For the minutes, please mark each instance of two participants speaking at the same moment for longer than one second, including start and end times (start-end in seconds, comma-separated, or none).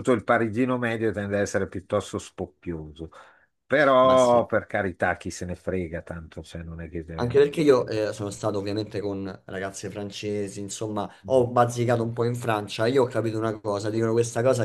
none